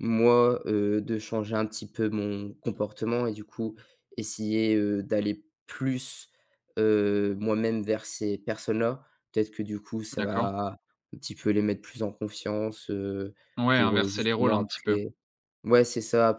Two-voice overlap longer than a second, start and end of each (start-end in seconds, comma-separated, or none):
13.7-15.0